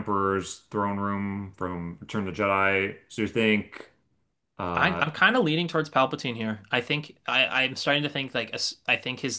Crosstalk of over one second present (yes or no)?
no